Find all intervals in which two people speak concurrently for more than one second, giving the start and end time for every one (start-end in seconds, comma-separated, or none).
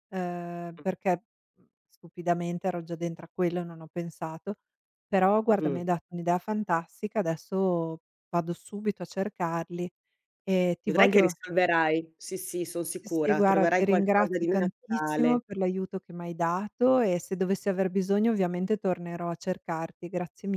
12.9-15.4